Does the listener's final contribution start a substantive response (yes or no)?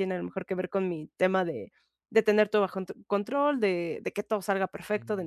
no